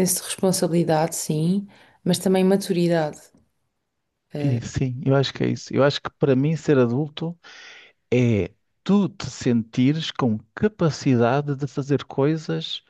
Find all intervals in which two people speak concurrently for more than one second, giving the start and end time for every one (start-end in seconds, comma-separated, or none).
none